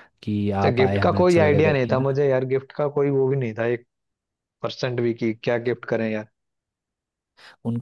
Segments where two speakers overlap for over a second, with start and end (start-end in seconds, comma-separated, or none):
0.6-2.2